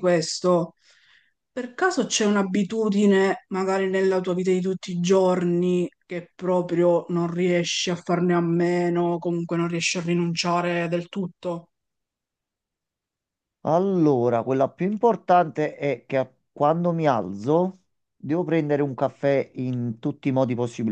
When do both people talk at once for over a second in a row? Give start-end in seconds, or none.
none